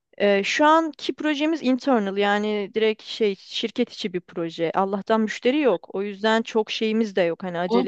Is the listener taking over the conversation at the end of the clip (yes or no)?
yes